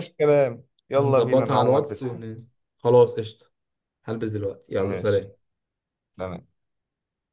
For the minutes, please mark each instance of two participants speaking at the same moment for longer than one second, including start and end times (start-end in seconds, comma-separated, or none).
1.0-2.3